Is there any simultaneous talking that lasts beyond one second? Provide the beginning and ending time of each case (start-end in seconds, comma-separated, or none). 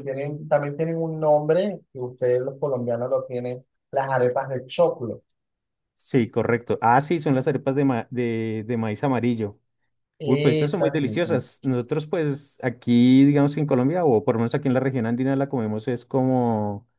10.2-11.4